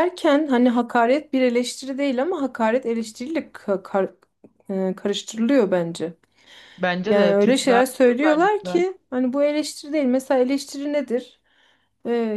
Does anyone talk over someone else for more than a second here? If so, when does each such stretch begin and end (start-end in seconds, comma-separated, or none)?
7.0-8.8